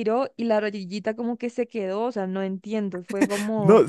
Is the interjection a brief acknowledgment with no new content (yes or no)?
no